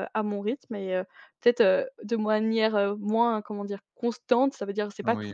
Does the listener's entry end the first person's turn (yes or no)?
no